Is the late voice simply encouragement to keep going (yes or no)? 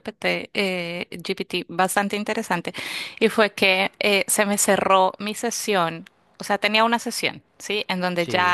yes